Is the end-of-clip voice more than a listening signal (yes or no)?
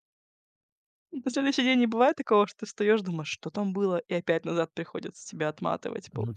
yes